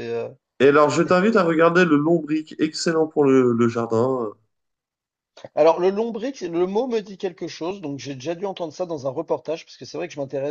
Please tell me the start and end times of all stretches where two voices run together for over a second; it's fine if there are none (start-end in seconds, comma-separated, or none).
none